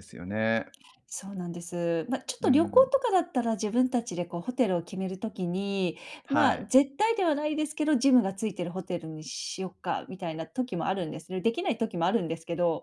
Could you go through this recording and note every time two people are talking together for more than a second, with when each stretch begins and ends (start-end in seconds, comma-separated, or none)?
none